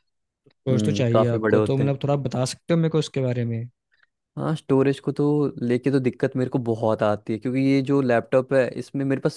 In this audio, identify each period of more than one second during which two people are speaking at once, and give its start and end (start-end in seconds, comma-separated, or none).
0.7-1.9